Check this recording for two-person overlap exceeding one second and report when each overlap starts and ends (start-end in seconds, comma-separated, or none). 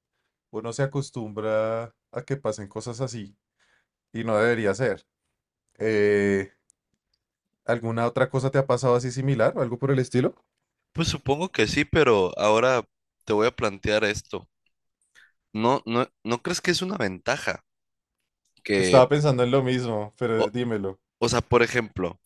none